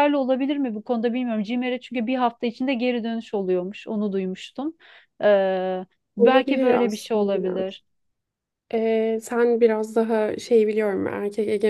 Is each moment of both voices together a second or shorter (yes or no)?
no